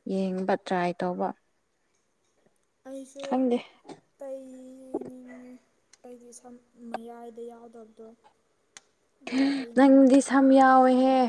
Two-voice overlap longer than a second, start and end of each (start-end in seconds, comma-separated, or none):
none